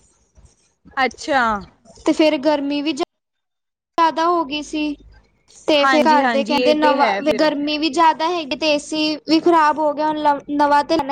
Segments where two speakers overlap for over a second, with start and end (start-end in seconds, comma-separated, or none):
5.8-7.5